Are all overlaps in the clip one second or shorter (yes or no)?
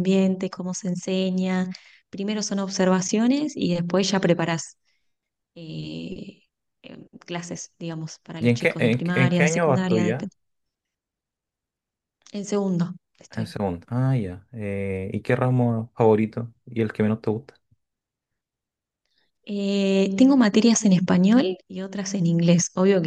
no